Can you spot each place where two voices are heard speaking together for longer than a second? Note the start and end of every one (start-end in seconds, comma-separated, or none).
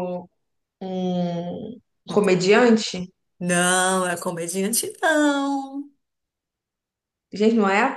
none